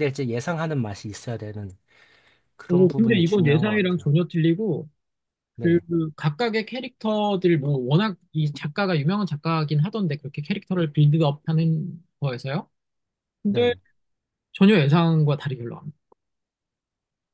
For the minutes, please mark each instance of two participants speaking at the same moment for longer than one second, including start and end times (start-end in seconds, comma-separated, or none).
2.7-4.1